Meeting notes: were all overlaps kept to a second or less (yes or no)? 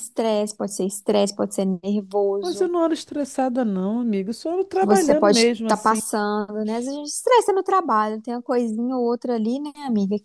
no